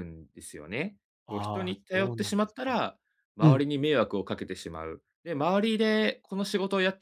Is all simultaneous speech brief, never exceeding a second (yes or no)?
no